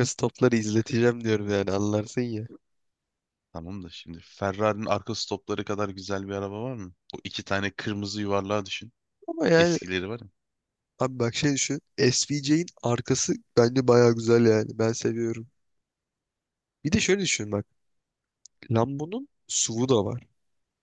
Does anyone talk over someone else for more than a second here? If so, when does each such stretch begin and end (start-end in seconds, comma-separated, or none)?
none